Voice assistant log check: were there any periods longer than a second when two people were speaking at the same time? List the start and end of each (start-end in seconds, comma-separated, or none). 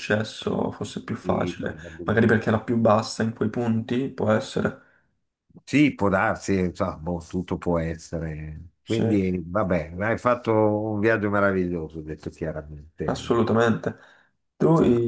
1.2-2.5